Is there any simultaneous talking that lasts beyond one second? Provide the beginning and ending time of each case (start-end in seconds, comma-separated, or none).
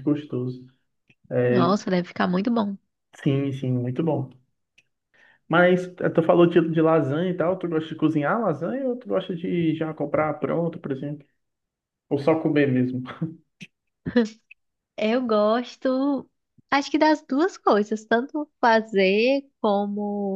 none